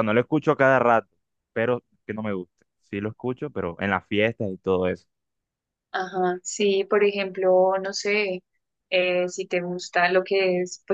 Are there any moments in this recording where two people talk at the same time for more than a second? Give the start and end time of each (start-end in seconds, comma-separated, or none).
none